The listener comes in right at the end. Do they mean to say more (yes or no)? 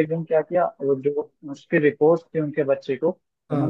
no